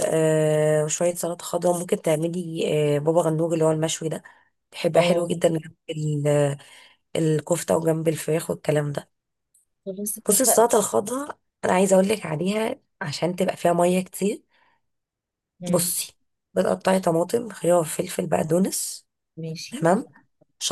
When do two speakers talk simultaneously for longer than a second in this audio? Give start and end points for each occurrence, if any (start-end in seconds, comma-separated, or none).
none